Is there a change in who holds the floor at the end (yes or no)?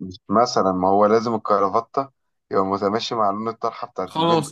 yes